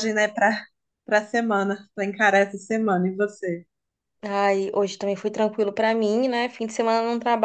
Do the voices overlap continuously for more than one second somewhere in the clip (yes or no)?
no